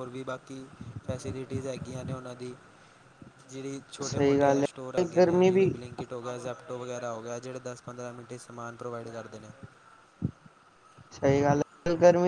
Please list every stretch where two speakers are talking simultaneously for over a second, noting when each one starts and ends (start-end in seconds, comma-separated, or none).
4.0-5.7